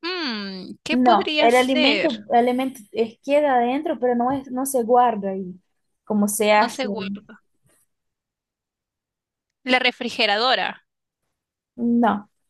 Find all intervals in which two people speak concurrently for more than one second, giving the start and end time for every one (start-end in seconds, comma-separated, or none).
0.9-2.2